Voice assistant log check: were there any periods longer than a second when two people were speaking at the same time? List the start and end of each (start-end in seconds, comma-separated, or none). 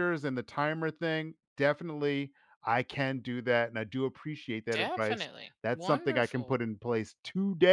4.7-6.6